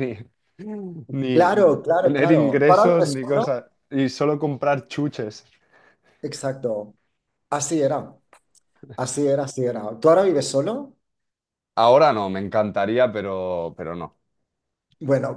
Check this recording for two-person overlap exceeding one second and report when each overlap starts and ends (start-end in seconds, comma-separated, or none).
1.3-3.5